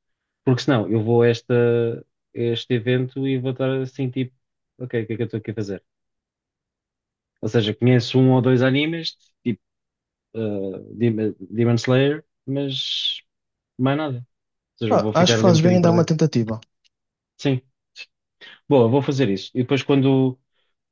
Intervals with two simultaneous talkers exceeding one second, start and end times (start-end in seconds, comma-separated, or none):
14.9-16.1